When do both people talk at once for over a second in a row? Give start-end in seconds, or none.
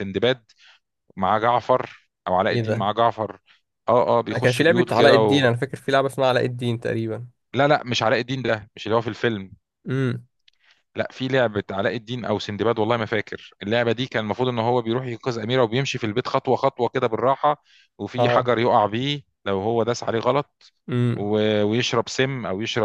4.3-5.5